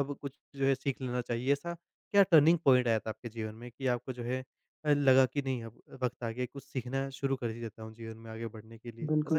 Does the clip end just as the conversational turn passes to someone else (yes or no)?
yes